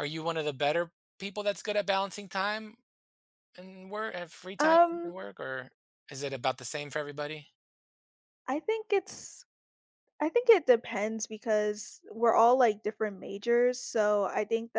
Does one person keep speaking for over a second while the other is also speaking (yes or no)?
no